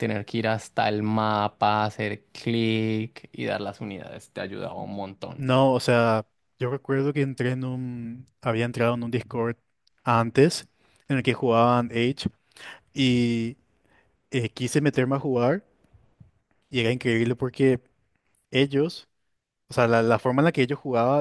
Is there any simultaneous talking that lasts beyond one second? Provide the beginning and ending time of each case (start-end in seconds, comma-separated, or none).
none